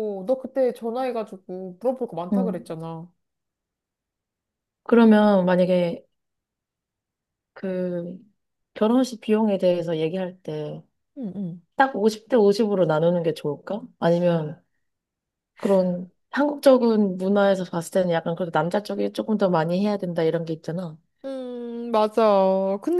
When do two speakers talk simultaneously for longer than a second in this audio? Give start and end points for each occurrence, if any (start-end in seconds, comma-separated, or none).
none